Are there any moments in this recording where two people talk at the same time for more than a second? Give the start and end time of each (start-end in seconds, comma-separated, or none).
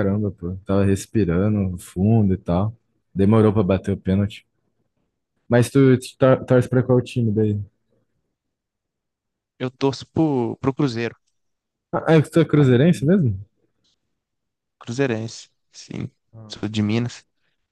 none